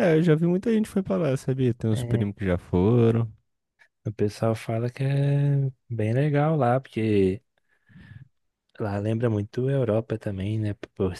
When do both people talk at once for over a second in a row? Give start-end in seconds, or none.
none